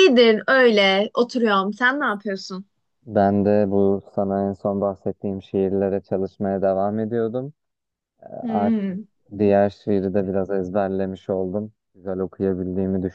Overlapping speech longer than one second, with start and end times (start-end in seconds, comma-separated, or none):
none